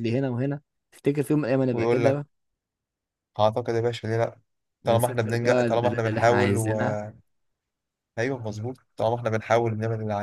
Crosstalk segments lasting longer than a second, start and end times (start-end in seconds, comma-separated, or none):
4.8-6.8